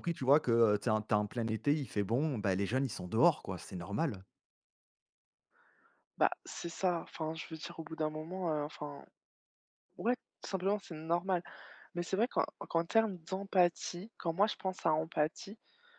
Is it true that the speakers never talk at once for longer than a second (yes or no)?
yes